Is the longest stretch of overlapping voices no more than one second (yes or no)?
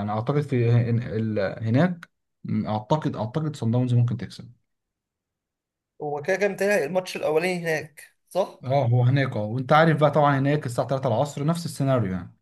yes